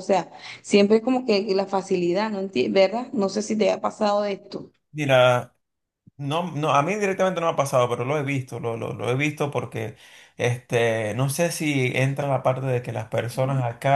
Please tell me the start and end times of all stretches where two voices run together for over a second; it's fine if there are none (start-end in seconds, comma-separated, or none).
none